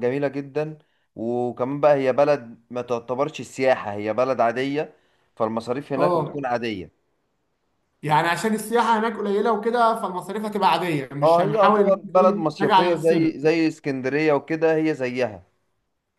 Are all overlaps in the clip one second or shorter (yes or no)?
no